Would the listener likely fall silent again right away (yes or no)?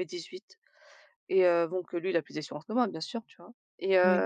yes